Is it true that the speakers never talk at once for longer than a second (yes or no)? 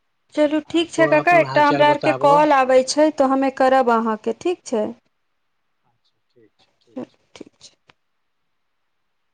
no